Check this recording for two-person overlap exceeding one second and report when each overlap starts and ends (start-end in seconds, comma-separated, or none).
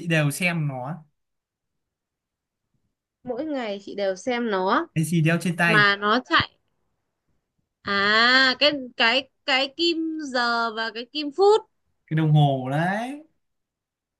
none